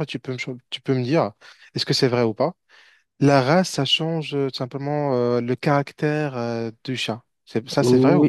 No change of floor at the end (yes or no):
no